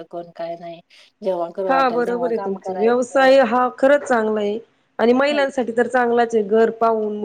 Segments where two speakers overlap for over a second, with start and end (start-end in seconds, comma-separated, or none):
1.7-3.3